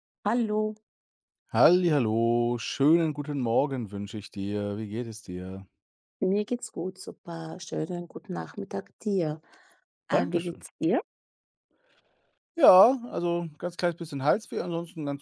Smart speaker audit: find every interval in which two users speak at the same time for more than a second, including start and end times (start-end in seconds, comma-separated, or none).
none